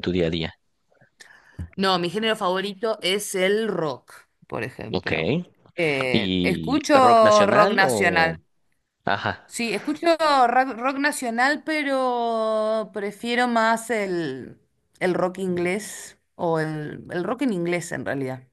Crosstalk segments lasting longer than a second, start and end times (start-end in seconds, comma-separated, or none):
6.1-8.3